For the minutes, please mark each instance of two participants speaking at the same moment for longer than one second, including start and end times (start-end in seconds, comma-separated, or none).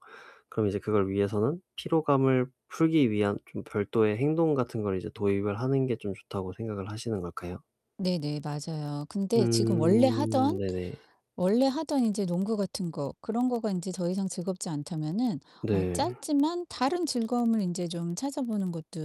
9.3-10.6